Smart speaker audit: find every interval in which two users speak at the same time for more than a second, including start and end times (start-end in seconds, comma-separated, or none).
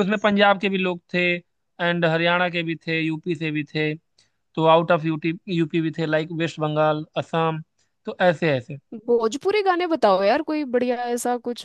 none